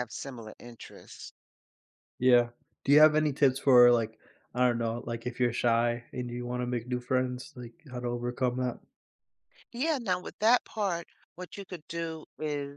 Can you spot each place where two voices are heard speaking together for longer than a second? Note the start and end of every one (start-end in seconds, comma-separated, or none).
none